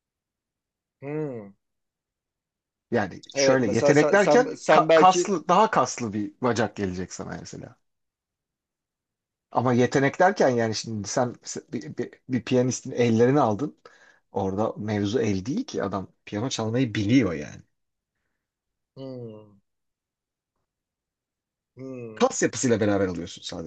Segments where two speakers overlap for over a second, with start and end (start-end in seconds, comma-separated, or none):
3.3-5.3